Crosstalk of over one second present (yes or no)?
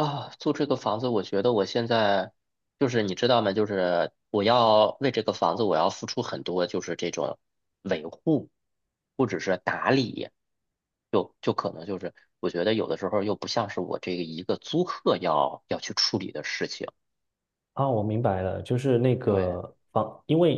no